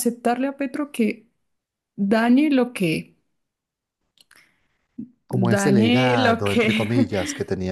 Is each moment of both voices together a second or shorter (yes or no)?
no